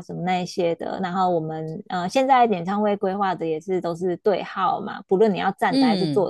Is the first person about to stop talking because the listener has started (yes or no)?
no